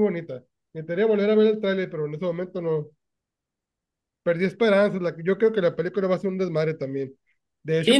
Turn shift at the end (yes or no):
yes